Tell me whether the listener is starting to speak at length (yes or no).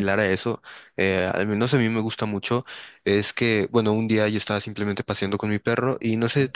no